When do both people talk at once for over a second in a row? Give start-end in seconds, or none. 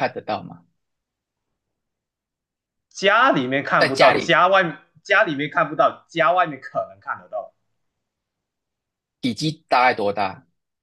none